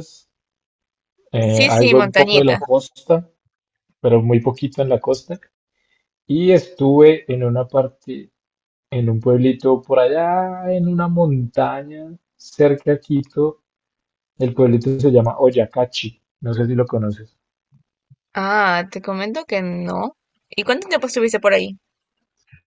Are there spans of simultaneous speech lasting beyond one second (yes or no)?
yes